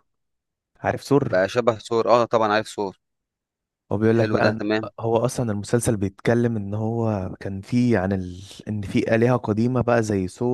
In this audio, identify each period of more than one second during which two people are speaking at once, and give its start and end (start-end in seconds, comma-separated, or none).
none